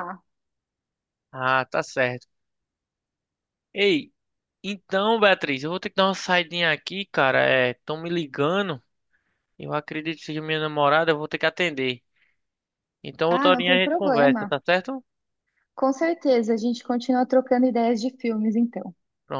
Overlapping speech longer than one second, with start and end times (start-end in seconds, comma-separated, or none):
13.3-14.5